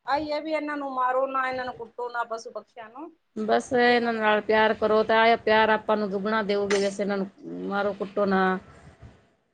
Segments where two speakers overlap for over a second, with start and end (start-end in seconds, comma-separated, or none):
none